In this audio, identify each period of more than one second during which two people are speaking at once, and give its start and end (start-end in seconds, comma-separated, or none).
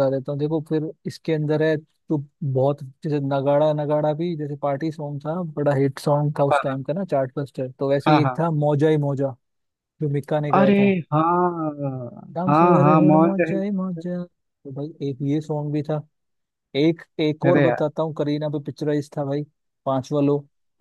12.5-14.0